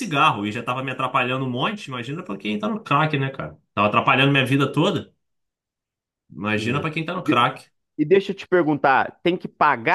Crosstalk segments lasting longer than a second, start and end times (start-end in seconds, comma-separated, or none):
none